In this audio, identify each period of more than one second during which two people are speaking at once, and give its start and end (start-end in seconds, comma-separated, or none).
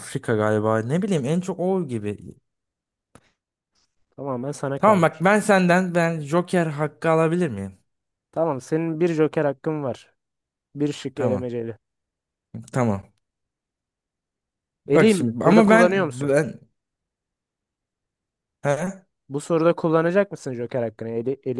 14.9-16.4